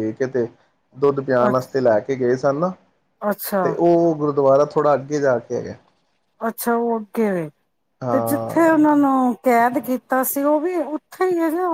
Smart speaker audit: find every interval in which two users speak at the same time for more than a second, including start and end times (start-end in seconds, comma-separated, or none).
none